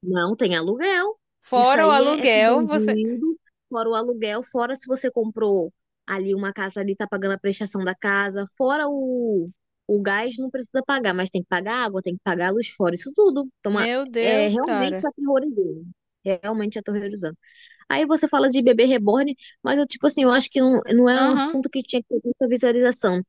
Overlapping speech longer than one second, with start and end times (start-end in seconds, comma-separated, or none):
1.5-3.0, 13.7-15.1